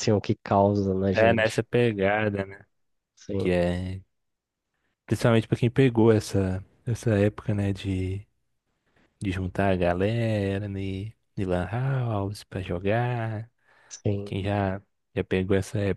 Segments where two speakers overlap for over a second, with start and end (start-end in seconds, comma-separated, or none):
none